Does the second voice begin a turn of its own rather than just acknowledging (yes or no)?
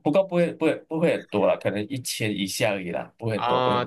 yes